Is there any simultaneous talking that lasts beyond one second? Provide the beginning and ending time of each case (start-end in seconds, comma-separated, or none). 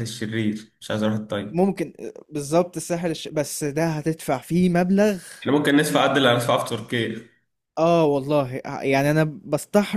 none